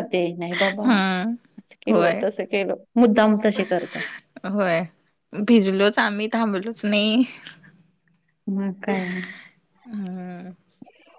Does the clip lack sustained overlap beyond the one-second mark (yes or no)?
yes